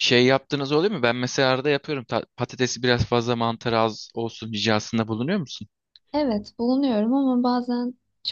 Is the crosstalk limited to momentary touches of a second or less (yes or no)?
yes